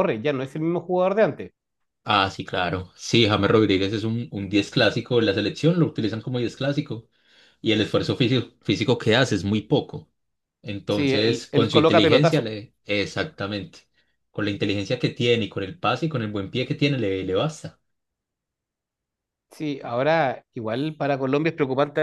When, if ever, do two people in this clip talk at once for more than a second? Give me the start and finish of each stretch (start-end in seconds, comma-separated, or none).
10.9-12.5